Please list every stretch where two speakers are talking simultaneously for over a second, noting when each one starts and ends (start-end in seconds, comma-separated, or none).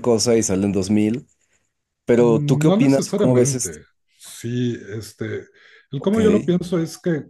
2.2-3.8